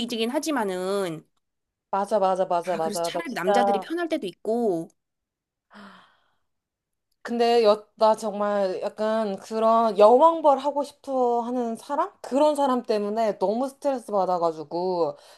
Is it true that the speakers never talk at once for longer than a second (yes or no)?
no